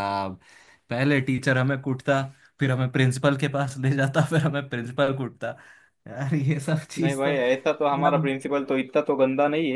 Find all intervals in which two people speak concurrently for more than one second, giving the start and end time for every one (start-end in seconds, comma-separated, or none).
7.0-8.3